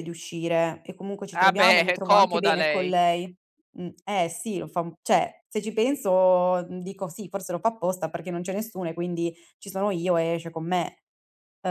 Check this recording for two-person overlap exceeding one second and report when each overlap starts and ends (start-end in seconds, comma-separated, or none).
1.3-2.9